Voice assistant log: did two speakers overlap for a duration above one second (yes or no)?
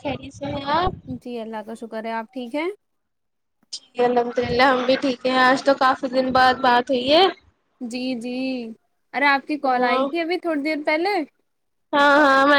no